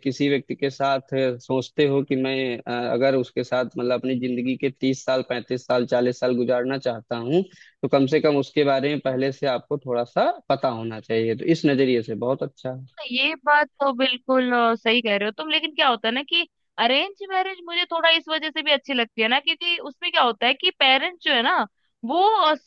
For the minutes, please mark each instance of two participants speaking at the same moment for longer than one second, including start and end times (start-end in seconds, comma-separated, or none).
none